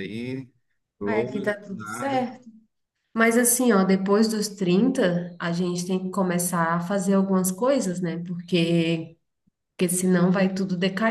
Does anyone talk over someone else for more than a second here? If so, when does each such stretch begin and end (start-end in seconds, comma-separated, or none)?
1.0-2.3